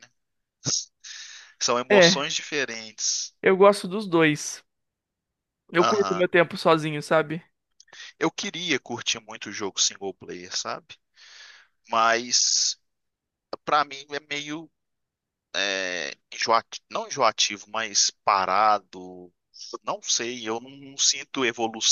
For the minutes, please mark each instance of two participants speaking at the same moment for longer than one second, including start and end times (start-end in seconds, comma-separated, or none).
none